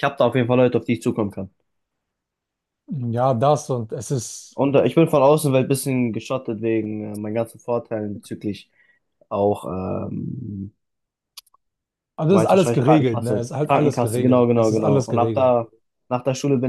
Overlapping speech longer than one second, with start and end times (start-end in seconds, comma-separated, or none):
12.3-15.5